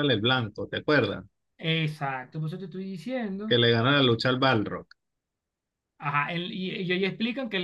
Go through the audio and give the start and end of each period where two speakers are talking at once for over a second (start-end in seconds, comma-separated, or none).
none